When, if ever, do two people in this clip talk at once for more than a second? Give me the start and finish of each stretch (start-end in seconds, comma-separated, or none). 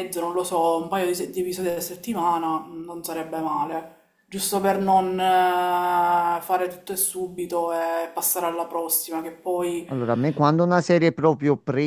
none